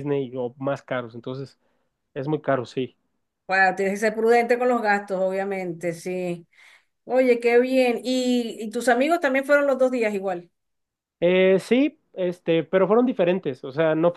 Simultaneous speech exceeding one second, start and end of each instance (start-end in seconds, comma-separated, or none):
none